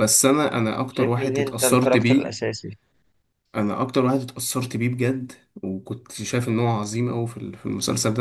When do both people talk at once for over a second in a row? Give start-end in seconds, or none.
0.9-2.4